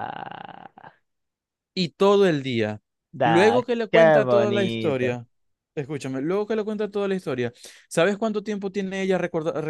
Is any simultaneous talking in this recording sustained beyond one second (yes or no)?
yes